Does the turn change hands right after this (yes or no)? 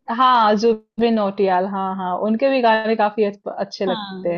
yes